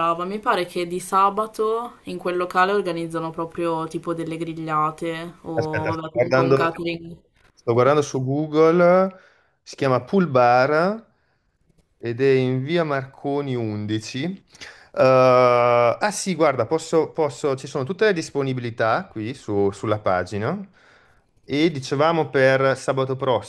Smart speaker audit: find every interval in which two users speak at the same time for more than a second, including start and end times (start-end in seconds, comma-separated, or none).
5.5-6.8